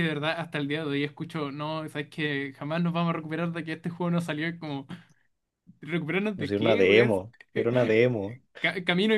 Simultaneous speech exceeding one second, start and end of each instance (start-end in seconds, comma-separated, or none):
6.3-7.7